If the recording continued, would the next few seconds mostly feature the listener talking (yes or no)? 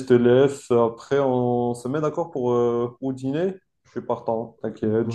yes